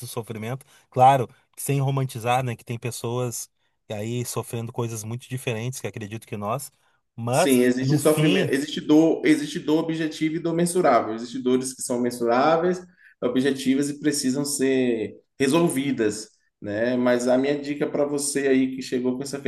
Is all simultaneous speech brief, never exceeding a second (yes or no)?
no